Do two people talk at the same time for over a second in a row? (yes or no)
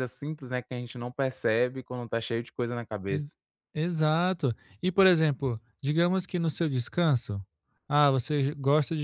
no